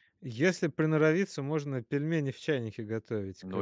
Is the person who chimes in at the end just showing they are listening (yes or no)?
no